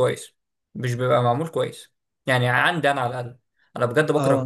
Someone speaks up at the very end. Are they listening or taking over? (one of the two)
listening